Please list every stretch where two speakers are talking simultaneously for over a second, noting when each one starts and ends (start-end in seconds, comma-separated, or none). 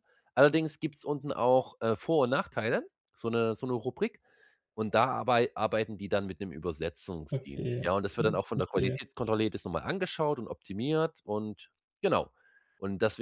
7.3-9.1